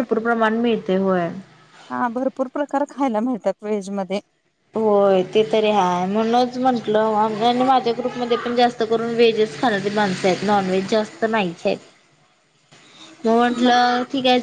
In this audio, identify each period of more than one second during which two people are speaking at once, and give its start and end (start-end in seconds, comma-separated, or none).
none